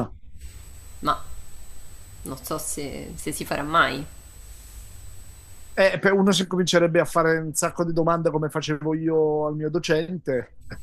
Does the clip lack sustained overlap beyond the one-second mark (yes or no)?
yes